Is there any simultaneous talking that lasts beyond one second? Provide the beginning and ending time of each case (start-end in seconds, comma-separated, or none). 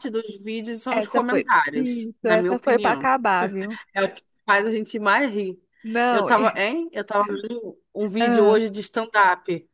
0.9-3.1